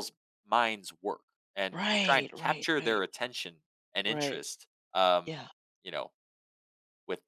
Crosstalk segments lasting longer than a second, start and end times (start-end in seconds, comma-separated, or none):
1.7-3.1